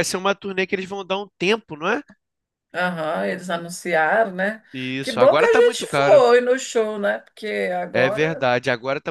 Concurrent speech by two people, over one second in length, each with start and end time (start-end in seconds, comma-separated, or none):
5.0-6.2